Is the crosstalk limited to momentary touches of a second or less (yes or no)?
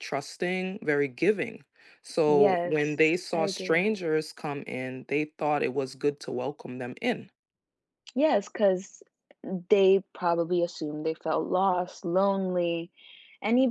no